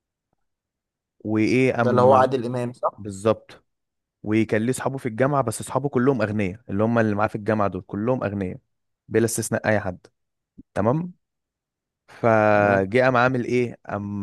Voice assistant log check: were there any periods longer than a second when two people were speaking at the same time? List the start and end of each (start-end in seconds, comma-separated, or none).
none